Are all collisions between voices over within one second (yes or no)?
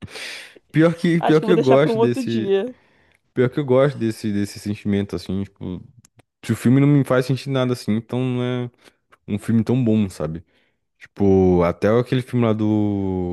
no